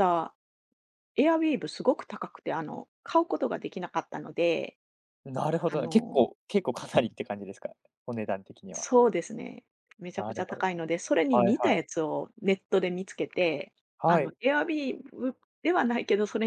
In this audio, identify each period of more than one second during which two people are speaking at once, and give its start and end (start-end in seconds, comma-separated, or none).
none